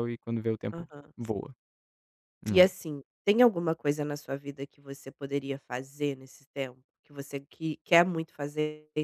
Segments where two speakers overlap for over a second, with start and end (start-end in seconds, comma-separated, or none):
none